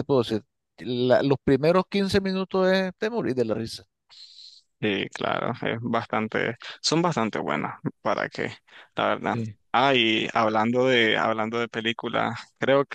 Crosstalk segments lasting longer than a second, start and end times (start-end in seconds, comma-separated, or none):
none